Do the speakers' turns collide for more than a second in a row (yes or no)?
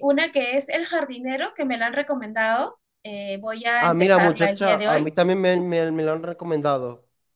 yes